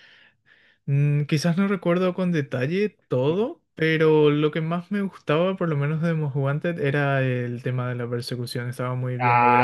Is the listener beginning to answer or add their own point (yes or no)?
yes